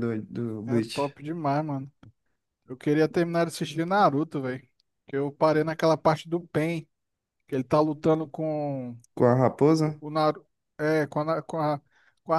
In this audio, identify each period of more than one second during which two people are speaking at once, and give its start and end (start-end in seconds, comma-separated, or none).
none